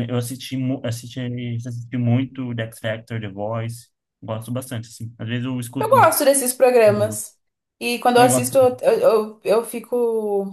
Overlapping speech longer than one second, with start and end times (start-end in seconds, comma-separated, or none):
none